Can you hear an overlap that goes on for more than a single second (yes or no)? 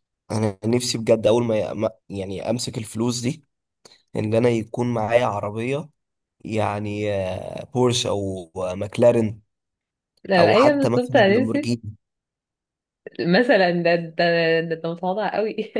yes